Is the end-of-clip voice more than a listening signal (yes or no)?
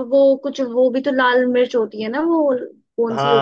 yes